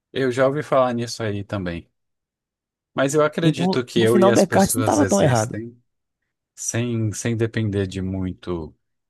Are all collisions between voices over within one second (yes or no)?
no